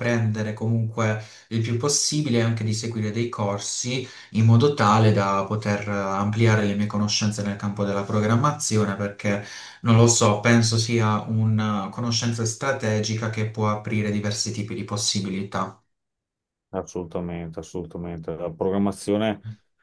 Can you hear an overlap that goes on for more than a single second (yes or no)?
no